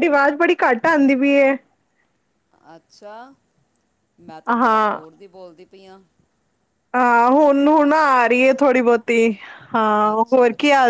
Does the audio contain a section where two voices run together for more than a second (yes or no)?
no